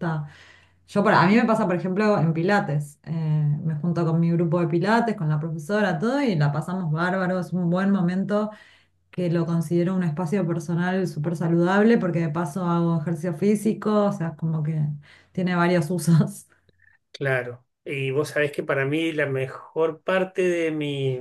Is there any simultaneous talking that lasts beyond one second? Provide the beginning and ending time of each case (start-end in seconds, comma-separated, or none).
none